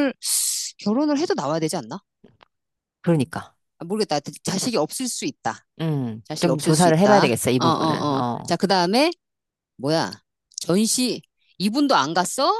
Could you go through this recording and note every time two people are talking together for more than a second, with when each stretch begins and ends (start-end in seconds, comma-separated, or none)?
6.2-8.6